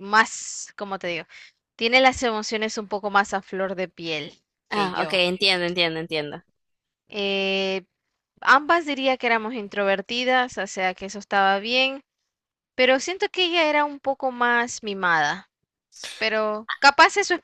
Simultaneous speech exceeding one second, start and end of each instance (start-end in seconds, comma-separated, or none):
none